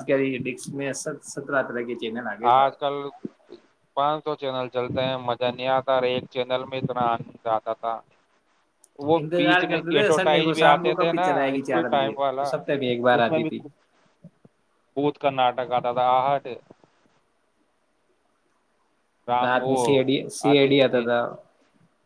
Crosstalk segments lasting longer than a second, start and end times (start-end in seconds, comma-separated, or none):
9.2-12.5